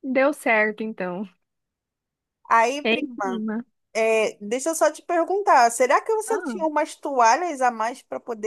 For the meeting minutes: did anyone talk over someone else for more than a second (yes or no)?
no